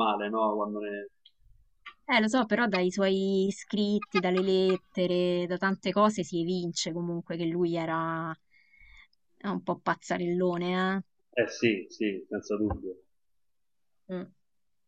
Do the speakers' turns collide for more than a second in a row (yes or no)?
no